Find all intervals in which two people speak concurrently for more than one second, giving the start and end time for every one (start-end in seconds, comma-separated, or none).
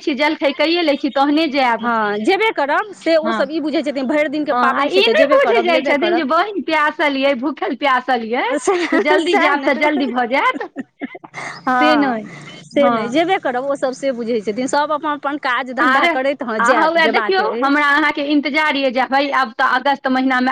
4.5-6.2, 15.8-17.6